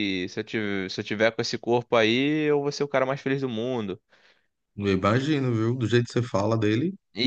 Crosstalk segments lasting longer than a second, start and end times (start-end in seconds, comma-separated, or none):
none